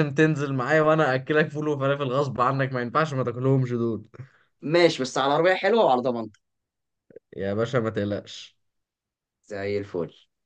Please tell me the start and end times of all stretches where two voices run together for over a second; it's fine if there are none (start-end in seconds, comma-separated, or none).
none